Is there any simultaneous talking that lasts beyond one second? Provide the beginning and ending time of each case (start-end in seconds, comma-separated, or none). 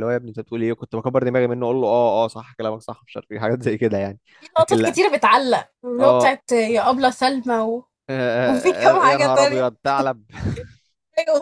8.4-9.7